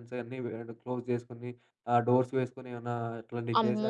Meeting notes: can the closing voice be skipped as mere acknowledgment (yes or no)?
no